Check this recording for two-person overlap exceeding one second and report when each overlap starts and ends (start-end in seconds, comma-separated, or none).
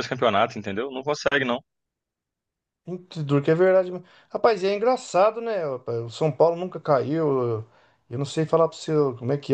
none